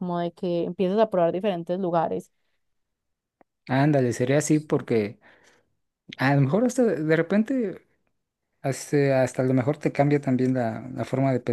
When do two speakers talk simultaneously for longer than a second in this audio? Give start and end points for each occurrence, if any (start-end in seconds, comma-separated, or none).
none